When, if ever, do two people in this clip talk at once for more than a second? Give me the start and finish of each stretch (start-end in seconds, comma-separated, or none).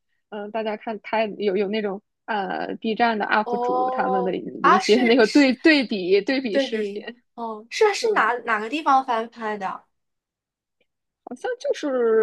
3.4-5.5